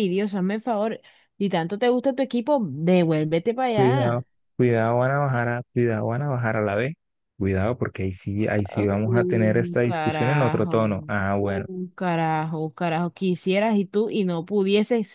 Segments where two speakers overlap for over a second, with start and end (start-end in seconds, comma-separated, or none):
9.0-10.7